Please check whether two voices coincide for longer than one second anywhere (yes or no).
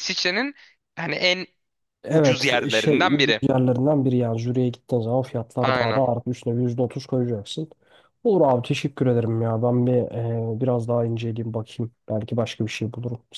yes